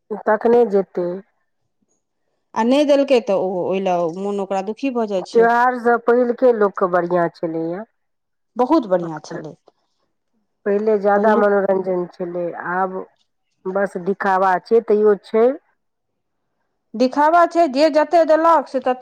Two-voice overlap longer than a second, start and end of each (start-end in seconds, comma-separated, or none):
none